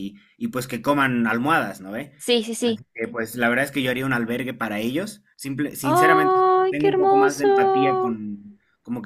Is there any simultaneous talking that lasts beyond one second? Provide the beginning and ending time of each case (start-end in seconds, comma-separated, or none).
5.8-8.2